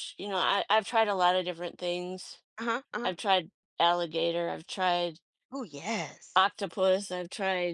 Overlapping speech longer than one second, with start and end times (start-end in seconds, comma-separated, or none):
none